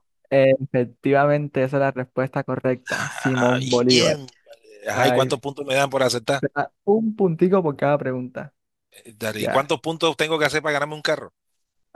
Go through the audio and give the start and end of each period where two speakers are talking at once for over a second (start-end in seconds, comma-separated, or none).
2.9-4.2